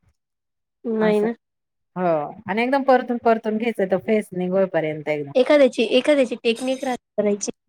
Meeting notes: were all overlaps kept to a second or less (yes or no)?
yes